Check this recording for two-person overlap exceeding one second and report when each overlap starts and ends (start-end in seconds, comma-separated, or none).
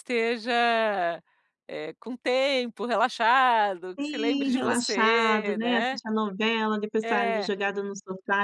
4.0-6.0